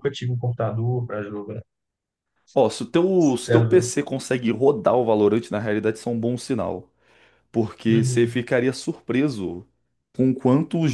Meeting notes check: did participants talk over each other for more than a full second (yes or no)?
no